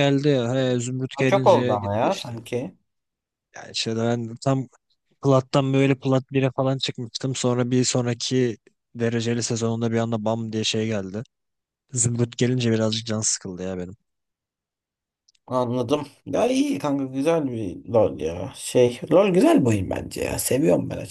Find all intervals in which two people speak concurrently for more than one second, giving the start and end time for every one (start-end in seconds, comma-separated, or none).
1.1-2.4